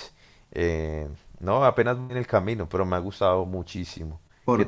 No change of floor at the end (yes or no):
no